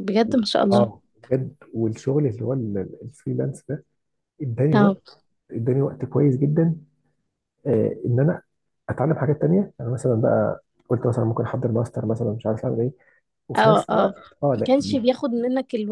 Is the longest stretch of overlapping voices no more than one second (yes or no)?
no